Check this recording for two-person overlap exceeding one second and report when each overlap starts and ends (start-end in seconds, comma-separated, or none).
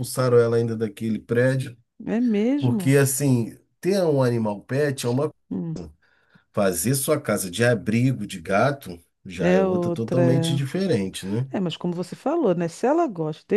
9.4-10.6